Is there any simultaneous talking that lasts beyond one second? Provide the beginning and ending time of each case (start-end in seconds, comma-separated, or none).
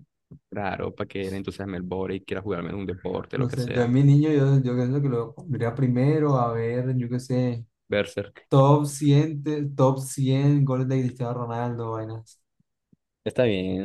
none